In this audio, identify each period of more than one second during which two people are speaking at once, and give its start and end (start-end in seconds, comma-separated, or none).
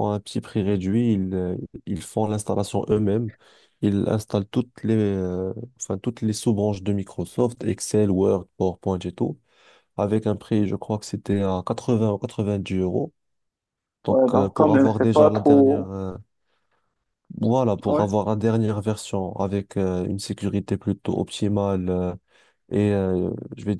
14.1-15.9